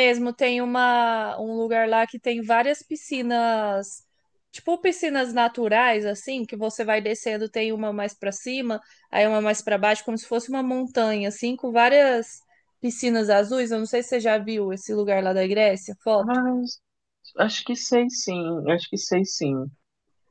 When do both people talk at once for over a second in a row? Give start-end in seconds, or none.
none